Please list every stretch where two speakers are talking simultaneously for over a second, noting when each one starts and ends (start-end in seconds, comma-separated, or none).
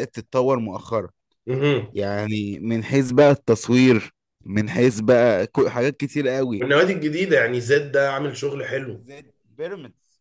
none